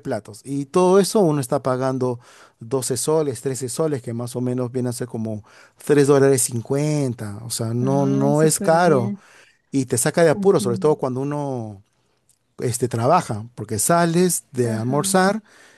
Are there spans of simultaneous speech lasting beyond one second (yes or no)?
yes